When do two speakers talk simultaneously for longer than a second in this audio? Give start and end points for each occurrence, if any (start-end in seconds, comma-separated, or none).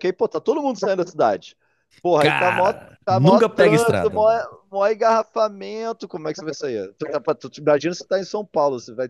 2.2-4.3